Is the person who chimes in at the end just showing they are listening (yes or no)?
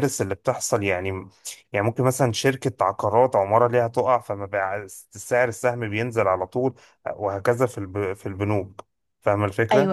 no